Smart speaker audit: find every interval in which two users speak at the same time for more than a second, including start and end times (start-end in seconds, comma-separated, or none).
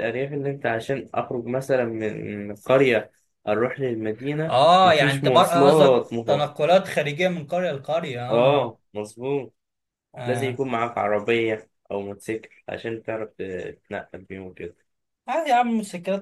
4.5-6.5